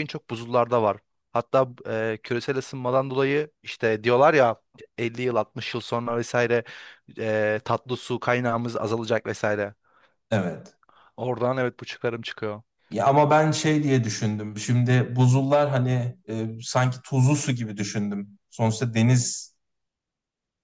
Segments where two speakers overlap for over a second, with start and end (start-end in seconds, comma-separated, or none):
none